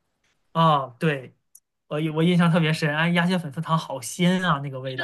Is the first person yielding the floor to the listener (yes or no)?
yes